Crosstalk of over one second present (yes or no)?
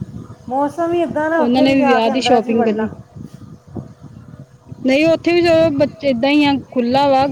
yes